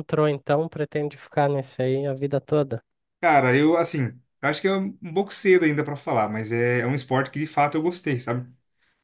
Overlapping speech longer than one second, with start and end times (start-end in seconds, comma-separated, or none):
none